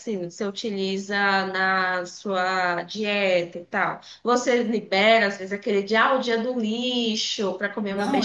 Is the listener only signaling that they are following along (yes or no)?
no